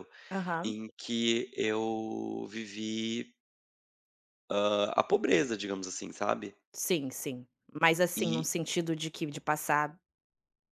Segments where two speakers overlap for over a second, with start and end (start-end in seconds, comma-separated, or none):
none